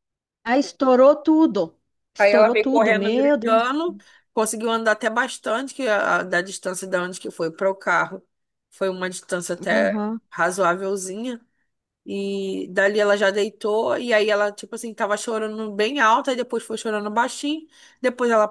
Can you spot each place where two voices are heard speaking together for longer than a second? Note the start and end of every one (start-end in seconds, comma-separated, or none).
2.2-3.6